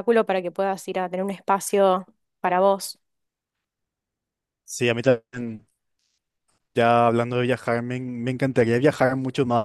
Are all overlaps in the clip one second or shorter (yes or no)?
yes